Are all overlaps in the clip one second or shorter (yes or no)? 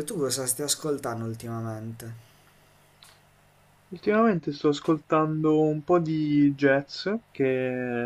yes